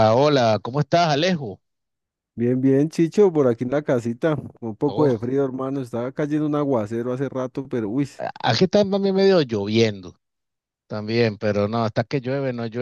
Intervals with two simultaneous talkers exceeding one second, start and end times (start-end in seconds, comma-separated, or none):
none